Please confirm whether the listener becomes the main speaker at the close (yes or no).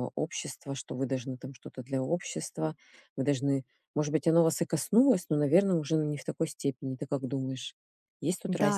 yes